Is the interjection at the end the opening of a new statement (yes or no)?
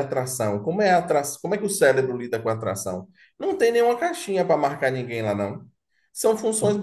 no